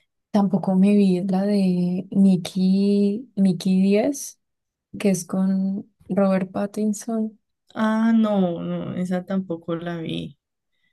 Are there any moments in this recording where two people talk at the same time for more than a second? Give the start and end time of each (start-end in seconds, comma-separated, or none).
none